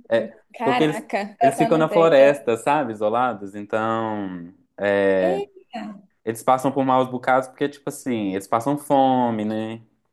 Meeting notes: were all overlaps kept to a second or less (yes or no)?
no